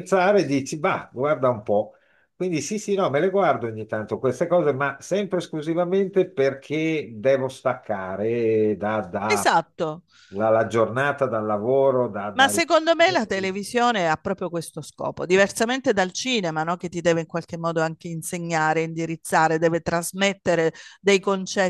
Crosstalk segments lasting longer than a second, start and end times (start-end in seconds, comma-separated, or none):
none